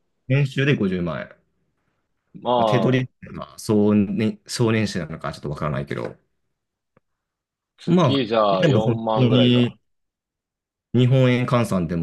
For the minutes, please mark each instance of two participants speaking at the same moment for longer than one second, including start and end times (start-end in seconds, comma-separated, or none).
7.8-9.8